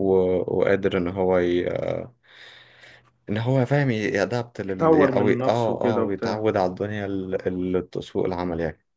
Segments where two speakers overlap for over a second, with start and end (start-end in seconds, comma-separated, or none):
4.7-6.4